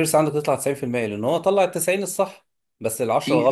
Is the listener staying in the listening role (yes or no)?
yes